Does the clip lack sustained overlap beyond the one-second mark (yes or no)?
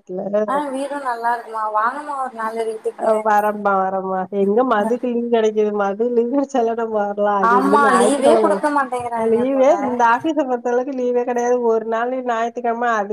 no